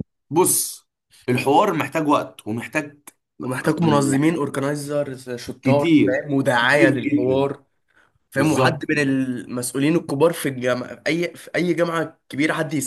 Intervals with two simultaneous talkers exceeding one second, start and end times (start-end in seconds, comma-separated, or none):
5.6-7.5